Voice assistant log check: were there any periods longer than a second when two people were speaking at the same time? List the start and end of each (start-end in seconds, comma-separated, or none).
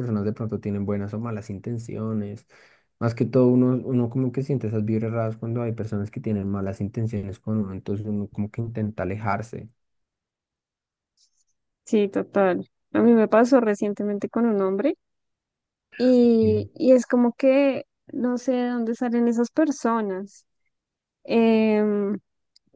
none